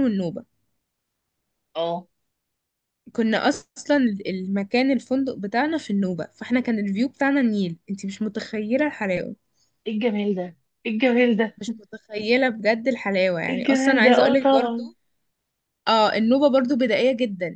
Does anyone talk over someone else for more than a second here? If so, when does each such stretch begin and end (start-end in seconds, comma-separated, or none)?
13.5-14.9